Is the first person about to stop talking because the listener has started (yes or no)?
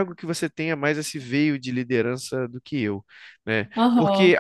no